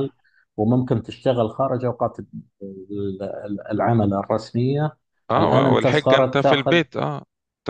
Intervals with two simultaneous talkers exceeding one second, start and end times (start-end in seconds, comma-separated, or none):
5.4-6.8